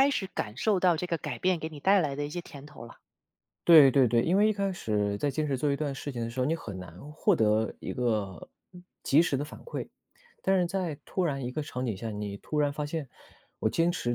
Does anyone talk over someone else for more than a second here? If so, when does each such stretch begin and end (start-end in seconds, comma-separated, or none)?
none